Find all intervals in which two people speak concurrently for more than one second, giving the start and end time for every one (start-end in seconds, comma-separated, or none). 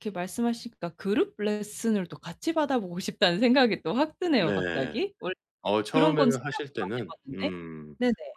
5.9-7.5